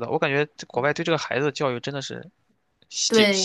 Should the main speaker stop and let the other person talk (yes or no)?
yes